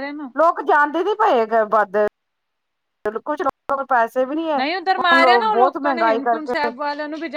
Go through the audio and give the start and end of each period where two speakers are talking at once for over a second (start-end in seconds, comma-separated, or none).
4.6-6.7